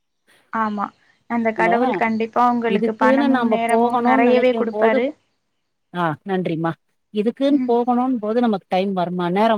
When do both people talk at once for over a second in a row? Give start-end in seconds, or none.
2.8-5.0